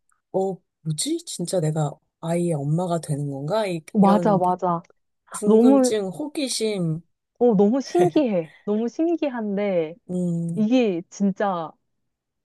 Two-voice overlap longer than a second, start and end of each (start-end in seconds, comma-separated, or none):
none